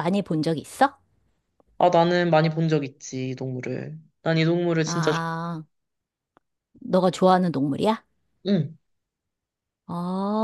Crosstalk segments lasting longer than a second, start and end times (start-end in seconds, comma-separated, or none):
none